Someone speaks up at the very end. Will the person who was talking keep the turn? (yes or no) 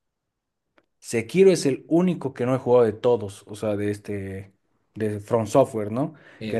yes